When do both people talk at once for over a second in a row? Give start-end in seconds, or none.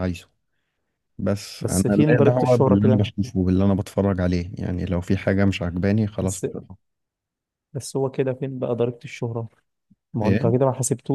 1.6-3.0